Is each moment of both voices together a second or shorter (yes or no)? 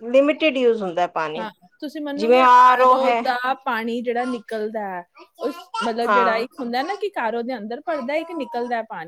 yes